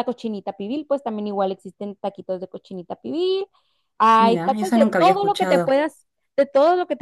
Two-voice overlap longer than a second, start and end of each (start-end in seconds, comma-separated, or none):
4.2-5.8